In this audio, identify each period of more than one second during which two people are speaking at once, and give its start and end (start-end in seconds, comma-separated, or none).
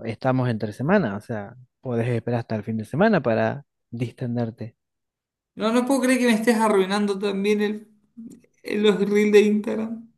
none